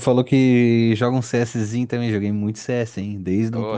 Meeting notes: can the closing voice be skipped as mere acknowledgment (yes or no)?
no